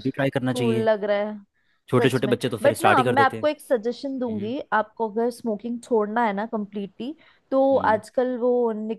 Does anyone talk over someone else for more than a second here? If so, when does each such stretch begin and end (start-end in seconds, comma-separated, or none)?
2.0-3.5